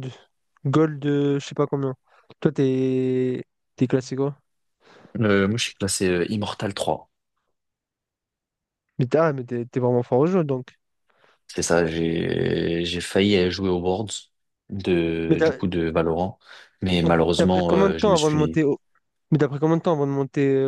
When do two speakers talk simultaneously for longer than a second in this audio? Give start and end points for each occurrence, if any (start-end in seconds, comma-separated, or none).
17.0-18.6